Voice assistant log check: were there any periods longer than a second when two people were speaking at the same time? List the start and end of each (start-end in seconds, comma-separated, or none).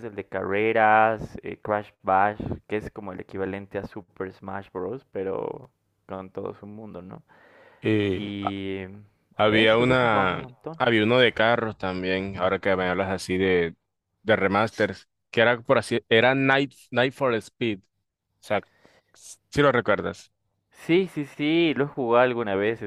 9.4-10.8